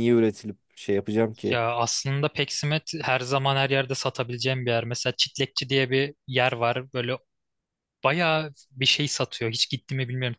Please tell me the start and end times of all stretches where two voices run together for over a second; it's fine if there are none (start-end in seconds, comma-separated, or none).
none